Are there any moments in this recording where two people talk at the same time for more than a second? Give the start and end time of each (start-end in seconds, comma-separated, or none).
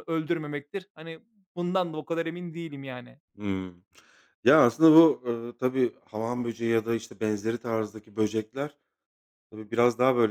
none